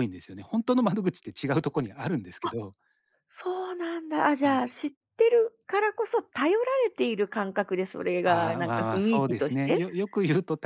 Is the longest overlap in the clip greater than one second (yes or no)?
yes